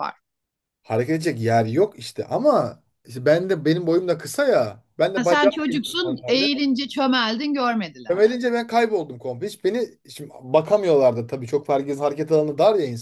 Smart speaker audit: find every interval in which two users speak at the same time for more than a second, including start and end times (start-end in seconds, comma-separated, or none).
5.2-6.5